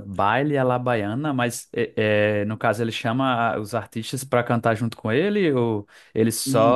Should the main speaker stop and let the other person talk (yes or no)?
no